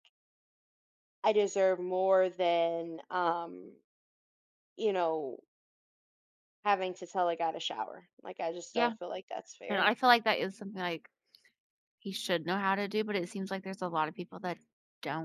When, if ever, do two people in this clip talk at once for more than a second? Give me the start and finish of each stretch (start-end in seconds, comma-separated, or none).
none